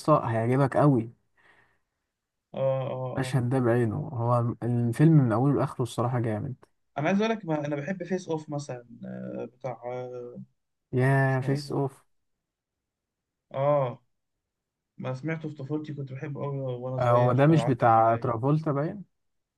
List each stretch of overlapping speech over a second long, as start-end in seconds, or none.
17.0-18.3